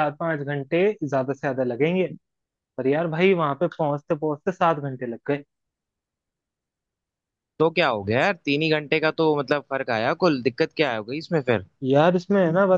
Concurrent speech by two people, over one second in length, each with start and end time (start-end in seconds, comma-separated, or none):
none